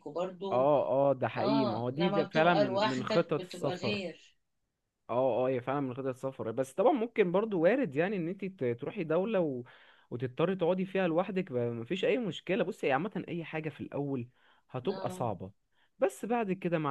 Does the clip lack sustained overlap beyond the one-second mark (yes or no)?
no